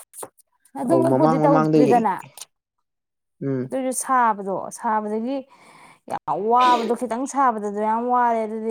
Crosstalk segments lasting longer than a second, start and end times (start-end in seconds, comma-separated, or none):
0.8-2.0